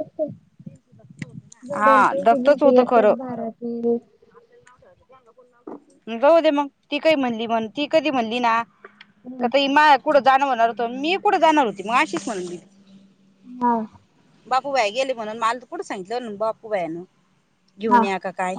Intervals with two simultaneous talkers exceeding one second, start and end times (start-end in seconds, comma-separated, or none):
1.7-3.4